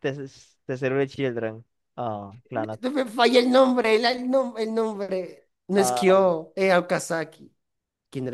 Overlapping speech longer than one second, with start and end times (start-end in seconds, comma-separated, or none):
none